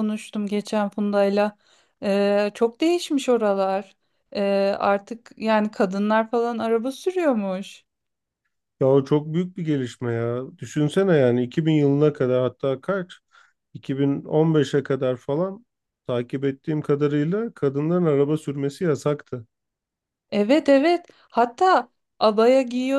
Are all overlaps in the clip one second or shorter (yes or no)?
yes